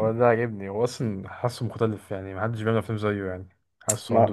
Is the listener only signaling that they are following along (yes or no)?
no